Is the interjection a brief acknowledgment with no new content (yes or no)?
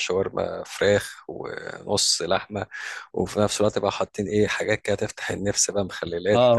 no